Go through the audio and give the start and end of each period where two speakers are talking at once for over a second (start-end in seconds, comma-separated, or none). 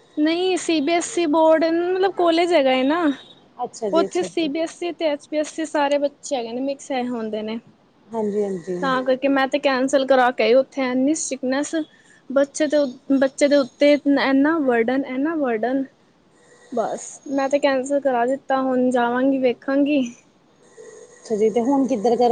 none